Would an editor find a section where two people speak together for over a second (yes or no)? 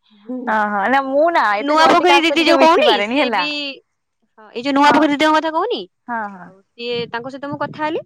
yes